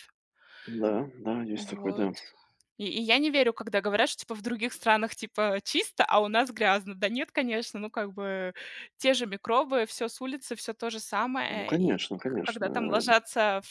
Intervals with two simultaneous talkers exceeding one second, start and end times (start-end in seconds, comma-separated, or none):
11.5-13.0